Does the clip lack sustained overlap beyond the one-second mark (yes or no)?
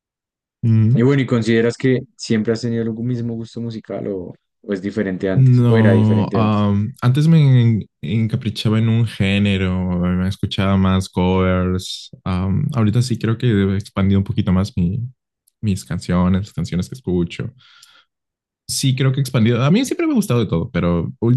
no